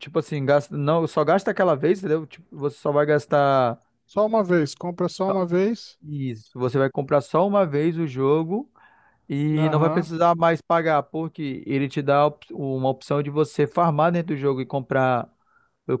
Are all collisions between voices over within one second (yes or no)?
yes